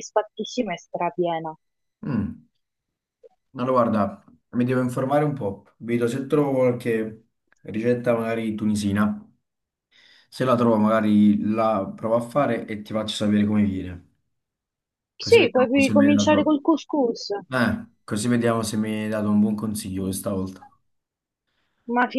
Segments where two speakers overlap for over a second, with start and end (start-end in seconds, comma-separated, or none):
15.2-16.6